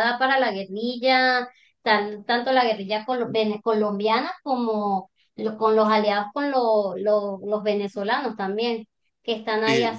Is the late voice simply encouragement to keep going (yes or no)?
yes